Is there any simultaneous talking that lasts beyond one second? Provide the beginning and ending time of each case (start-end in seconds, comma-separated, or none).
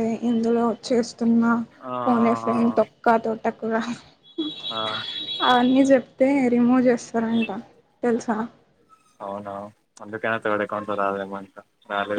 none